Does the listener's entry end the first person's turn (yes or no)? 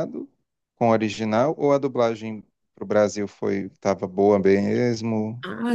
yes